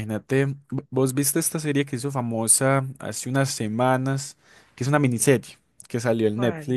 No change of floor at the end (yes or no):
yes